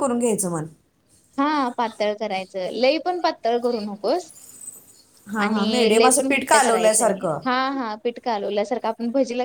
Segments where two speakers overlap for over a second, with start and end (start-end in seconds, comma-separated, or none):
5.4-7.4